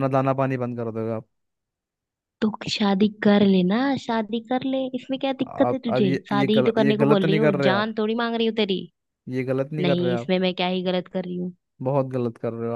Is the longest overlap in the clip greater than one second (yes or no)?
yes